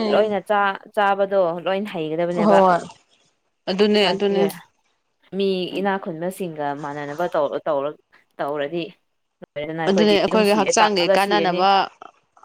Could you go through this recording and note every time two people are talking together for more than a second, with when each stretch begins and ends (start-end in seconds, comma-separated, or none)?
9.9-11.6